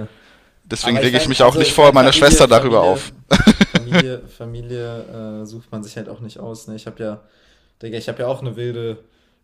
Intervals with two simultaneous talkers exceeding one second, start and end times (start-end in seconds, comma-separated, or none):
0.8-3.0